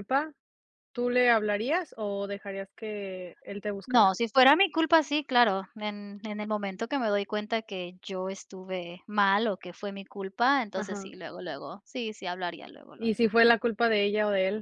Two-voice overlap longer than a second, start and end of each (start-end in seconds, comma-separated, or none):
none